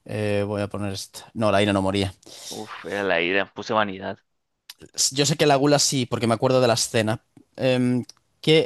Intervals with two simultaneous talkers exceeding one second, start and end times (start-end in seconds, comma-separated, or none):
none